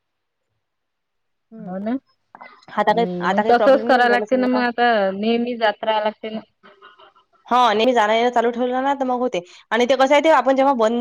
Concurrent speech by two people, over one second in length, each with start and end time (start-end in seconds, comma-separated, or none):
3.0-4.6